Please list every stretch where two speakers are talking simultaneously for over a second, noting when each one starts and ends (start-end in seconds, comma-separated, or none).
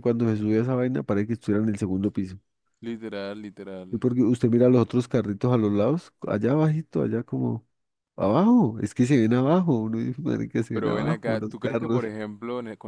10.7-12.0